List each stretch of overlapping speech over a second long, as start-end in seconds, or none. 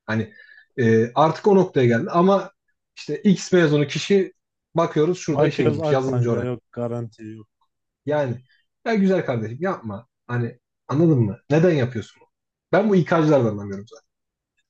5.3-6.5